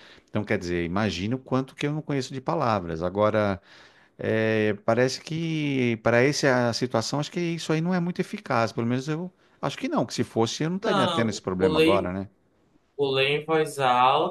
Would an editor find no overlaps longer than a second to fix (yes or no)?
no